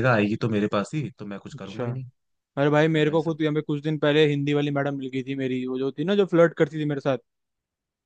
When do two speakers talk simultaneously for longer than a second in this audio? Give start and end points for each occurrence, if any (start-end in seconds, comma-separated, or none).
none